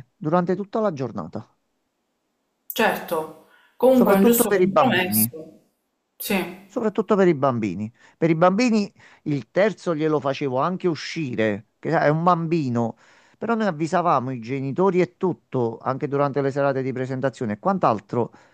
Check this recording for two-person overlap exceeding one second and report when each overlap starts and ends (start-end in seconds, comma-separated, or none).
3.9-5.3